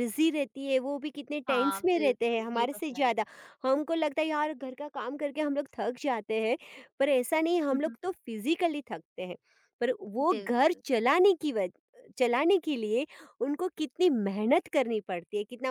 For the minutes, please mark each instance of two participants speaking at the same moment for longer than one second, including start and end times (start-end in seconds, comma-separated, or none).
1.5-3.1